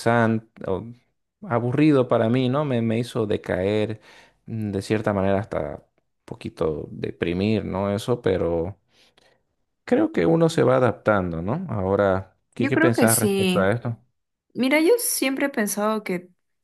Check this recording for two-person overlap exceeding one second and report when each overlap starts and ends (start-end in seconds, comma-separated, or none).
12.6-13.8